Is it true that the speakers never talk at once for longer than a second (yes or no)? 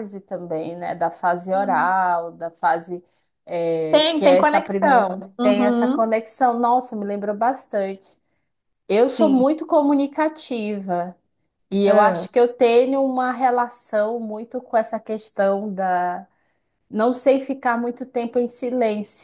no